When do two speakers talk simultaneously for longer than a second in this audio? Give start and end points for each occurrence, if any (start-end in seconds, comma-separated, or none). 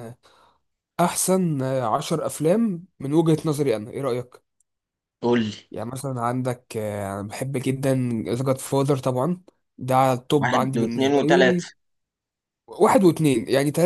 10.4-11.7